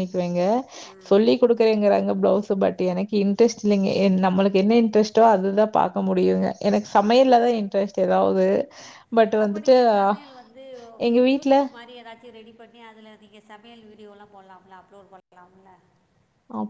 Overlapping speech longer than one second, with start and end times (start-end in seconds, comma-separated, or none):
none